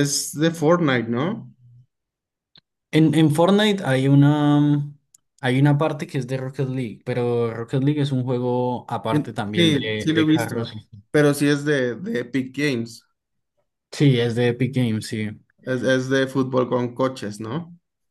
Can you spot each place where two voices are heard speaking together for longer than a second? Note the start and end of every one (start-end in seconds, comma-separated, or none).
9.1-10.7